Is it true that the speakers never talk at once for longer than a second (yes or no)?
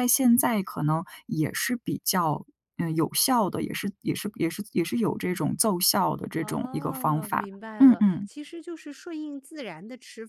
no